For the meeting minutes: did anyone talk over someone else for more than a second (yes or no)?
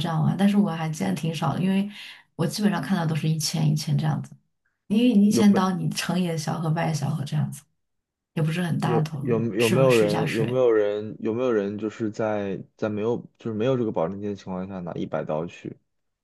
yes